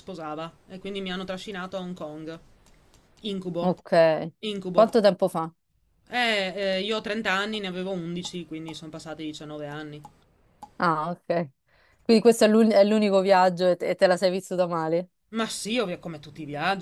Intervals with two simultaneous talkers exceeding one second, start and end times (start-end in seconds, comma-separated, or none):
none